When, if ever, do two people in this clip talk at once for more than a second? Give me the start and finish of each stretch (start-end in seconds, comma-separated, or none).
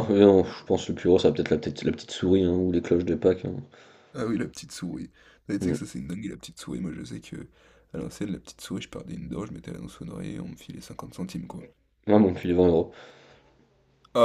none